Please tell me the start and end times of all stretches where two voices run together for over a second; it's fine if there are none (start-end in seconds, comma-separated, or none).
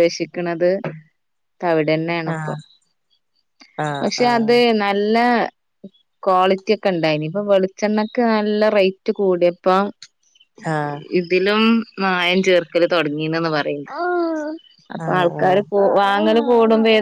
none